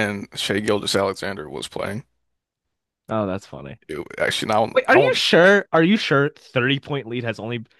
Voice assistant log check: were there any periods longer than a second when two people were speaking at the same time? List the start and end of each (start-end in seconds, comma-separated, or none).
none